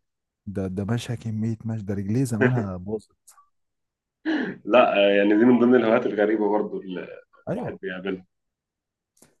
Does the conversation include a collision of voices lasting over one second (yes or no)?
no